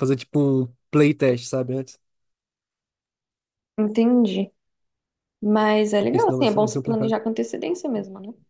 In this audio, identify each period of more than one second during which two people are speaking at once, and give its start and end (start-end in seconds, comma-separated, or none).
6.0-7.2